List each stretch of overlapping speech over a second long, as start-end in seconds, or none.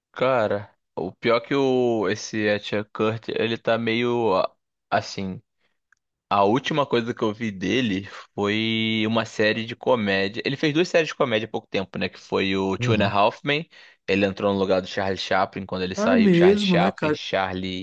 15.9-17.2